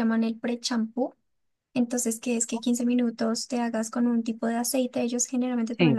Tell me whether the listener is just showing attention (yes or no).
yes